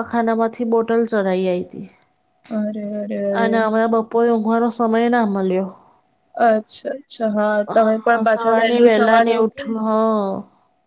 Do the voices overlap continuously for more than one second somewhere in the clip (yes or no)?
yes